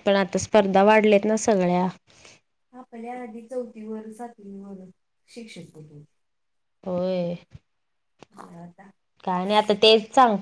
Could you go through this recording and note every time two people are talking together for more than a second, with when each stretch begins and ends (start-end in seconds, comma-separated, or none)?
none